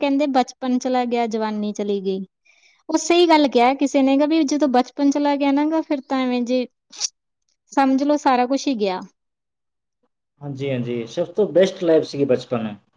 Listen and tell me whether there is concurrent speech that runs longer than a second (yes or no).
no